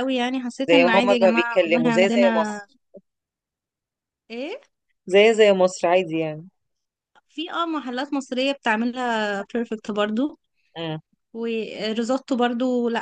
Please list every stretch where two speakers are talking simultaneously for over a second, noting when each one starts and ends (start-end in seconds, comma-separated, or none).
0.7-2.6